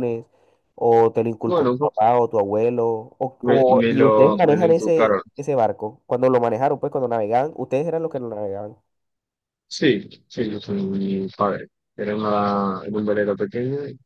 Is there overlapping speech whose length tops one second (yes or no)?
yes